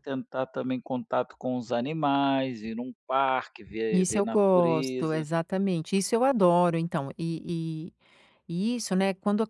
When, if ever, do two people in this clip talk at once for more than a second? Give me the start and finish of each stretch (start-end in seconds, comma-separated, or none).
3.9-5.3